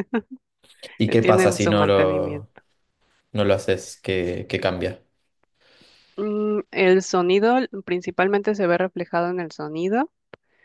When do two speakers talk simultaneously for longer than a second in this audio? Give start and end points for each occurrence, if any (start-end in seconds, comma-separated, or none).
1.1-2.5